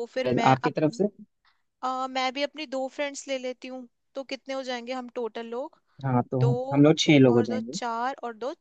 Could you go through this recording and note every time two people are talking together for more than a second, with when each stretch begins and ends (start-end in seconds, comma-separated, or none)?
none